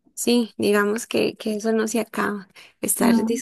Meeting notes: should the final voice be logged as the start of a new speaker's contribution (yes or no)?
no